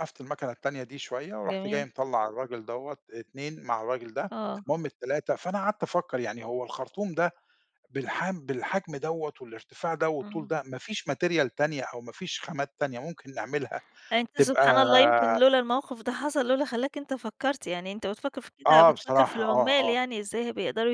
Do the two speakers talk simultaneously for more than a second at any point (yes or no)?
yes